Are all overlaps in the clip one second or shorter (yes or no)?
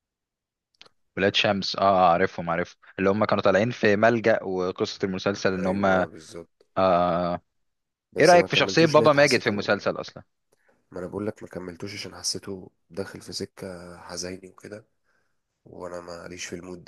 no